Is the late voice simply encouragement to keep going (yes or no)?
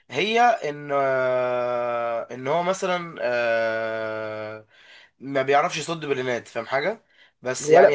no